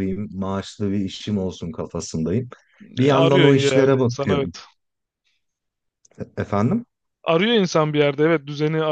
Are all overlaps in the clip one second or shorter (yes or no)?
no